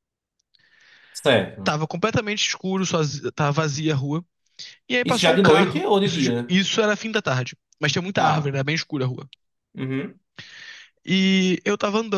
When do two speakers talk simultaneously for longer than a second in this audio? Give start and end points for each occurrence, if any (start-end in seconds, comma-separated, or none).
5.0-6.5